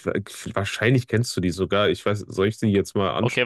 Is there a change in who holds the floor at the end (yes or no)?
yes